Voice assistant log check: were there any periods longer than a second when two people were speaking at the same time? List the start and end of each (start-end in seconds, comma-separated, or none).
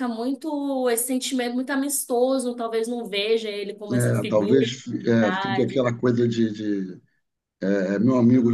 3.9-5.8